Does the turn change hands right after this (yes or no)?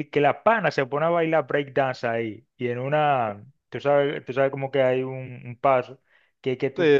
no